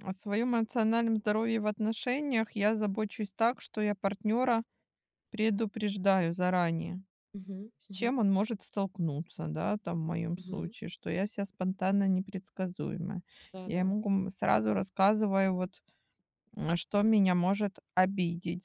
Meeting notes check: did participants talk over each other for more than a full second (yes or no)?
no